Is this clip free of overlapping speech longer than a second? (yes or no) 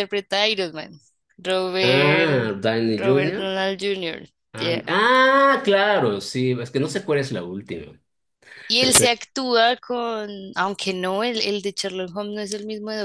no